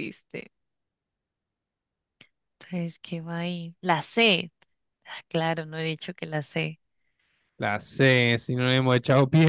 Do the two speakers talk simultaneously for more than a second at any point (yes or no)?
no